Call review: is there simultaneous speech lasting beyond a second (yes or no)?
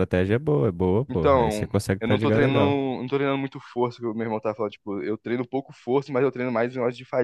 yes